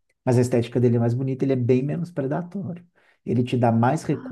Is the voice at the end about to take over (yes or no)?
no